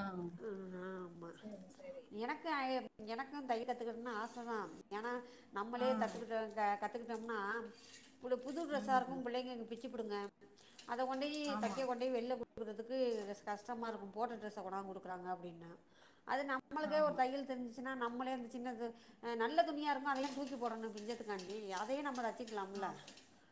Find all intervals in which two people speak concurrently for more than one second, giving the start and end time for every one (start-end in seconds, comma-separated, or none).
none